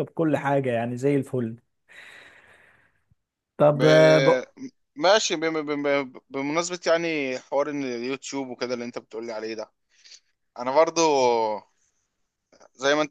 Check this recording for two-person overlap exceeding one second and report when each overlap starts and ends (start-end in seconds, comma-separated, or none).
none